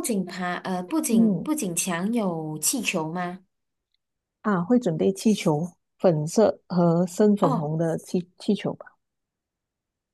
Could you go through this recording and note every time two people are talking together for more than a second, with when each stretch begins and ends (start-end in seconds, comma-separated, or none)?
none